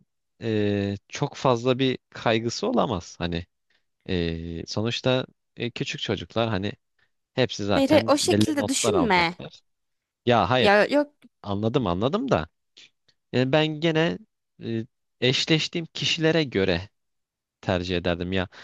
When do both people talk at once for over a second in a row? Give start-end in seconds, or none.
7.7-9.3